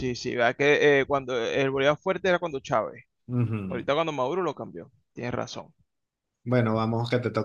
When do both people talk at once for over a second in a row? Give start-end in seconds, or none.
none